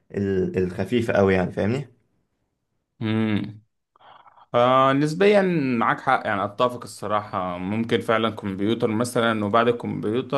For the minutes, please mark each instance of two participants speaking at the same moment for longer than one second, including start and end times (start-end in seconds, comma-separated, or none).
none